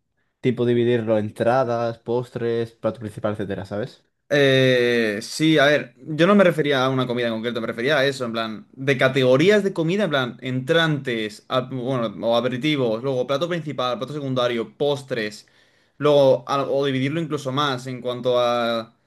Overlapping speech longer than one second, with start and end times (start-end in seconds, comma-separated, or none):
none